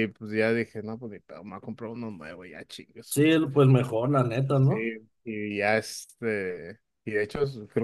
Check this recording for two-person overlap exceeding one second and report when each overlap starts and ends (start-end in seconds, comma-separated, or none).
none